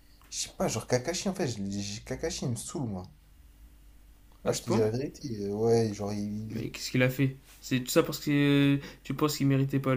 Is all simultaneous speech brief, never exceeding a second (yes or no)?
yes